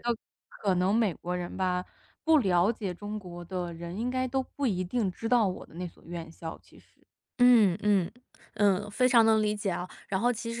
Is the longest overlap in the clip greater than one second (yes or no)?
no